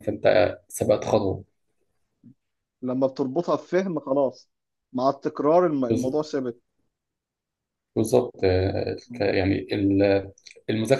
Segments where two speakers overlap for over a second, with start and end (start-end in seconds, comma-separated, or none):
none